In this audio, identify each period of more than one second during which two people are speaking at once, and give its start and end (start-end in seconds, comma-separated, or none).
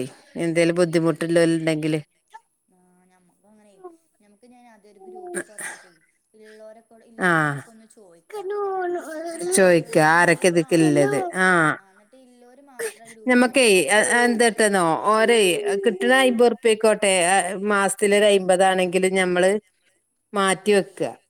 9.6-11.2